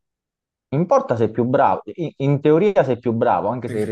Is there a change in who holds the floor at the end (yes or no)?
no